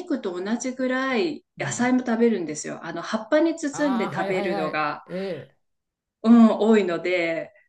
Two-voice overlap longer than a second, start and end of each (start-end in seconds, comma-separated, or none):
3.7-5.0